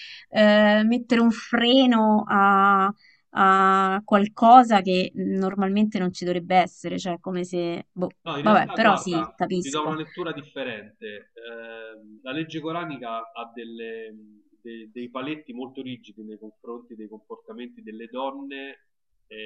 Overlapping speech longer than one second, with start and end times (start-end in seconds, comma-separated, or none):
8.2-10.0